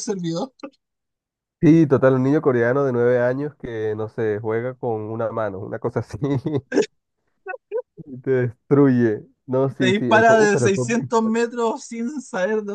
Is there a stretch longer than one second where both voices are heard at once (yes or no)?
yes